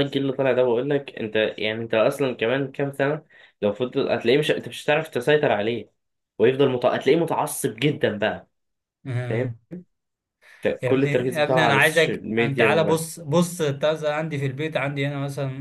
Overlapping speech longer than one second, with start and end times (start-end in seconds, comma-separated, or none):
10.8-13.0